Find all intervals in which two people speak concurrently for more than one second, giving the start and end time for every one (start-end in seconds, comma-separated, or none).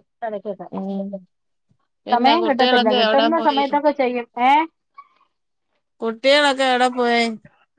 2.1-3.6